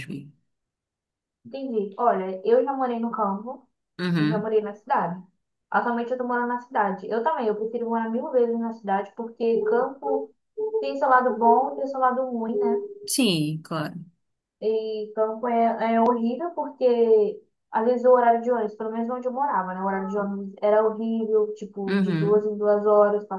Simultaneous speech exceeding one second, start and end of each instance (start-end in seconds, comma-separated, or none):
none